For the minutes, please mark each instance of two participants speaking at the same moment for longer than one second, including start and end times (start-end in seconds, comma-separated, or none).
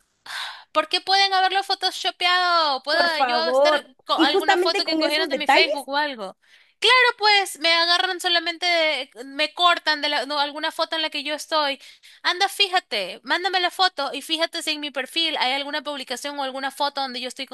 2.9-5.7